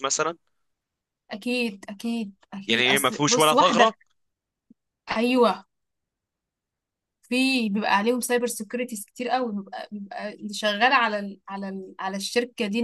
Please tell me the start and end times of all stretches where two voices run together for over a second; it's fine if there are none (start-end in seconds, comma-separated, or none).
2.7-3.9